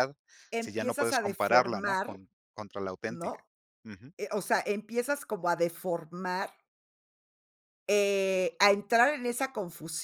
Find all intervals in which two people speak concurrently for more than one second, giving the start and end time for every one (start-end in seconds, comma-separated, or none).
0.6-2.2